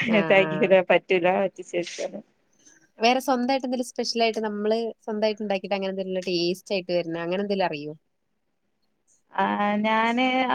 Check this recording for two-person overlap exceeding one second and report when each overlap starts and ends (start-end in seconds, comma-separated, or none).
none